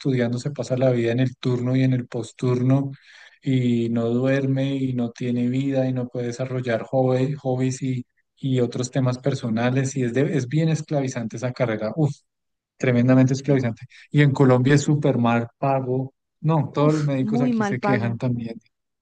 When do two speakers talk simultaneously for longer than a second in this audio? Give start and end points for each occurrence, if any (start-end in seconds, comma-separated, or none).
16.7-18.2